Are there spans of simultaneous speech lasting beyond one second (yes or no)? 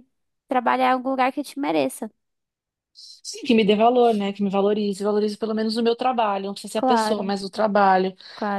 no